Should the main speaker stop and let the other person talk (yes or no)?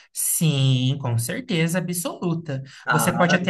no